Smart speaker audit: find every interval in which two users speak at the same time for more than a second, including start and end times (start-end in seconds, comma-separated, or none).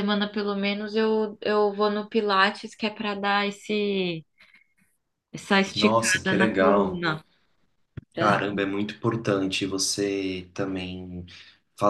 5.7-7.1